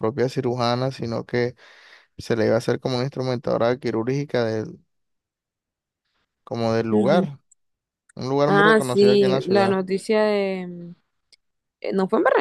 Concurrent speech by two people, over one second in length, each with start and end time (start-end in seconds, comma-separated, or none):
8.5-9.8